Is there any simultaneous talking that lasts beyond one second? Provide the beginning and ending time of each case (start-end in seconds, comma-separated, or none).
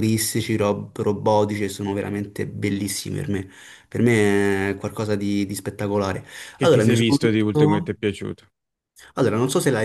6.6-7.9